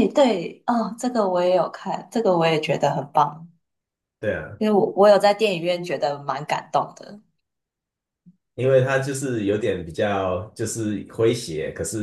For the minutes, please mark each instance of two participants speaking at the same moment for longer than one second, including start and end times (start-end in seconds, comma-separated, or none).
none